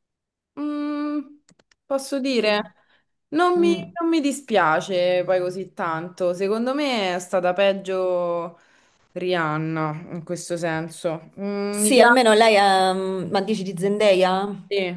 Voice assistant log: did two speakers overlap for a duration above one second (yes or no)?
no